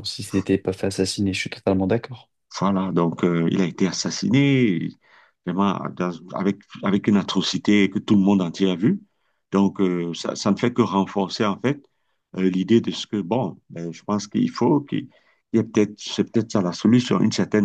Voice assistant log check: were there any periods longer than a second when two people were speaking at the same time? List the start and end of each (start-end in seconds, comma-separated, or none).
none